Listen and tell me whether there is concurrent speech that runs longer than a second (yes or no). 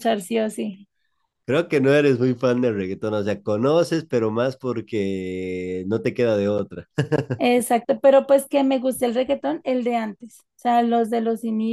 no